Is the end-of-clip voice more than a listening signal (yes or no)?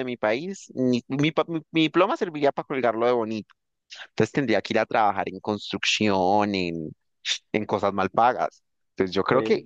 no